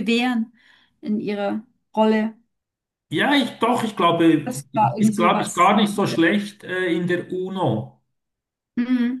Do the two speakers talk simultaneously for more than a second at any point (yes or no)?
yes